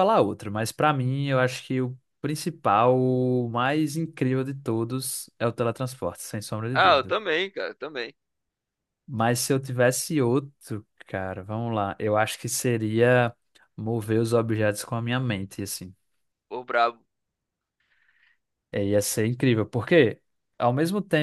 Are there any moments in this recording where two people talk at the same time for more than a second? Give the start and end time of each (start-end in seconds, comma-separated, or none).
none